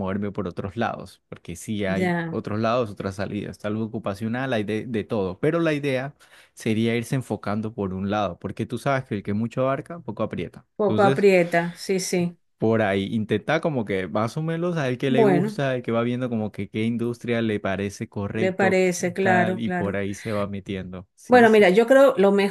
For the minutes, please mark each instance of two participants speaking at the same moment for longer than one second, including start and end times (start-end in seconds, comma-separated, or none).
18.3-20.0